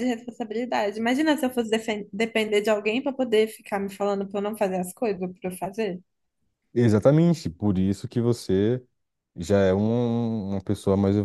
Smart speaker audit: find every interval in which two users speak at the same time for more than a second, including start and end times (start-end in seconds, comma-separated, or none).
none